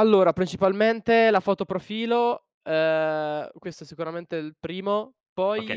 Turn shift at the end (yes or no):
yes